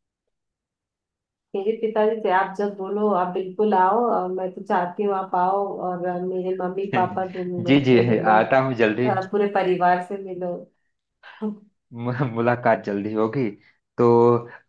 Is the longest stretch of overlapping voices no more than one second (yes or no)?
no